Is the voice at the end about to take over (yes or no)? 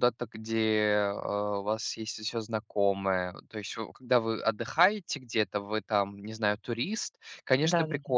no